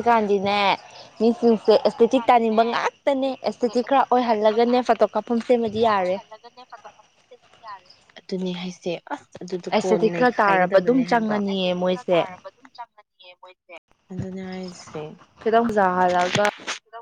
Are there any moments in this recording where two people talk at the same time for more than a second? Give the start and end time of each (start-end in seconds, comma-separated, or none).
1.2-2.6, 3.2-6.2, 9.7-11.3